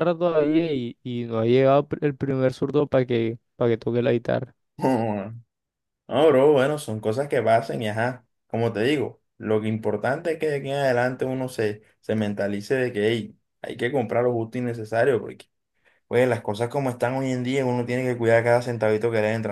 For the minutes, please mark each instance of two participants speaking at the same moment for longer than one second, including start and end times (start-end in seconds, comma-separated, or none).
none